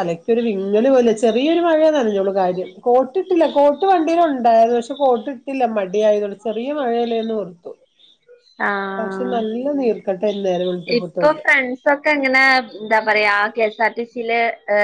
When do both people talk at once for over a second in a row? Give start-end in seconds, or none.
none